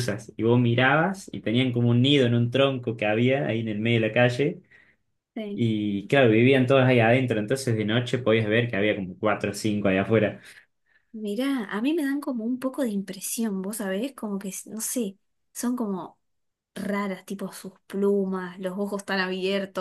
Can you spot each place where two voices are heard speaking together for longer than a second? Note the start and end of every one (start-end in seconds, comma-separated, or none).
none